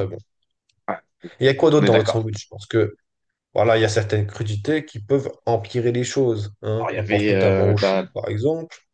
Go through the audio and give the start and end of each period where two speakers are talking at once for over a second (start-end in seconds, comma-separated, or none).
6.8-8.1